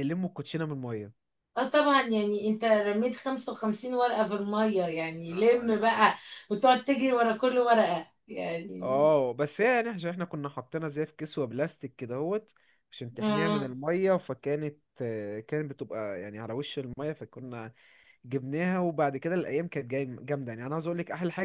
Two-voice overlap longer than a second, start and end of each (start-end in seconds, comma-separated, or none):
none